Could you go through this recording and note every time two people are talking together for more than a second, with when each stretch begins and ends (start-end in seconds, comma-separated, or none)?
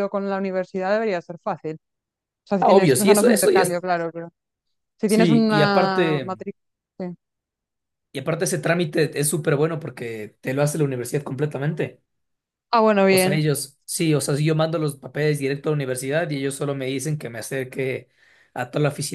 2.6-3.8, 5.0-6.4